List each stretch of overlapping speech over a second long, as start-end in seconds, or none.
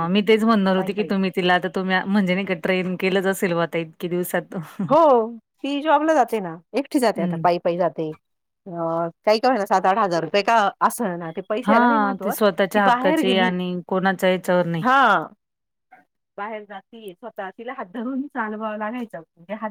11.7-13.5